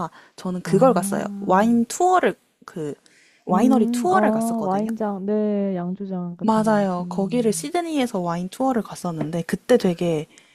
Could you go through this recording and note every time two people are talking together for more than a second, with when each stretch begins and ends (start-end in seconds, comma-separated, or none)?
3.5-4.9, 6.4-7.7